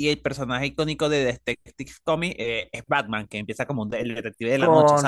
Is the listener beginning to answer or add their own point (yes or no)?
yes